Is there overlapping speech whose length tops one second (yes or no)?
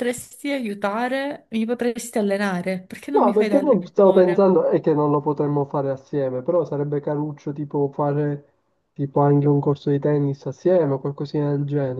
yes